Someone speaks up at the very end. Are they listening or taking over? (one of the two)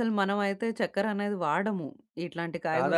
taking over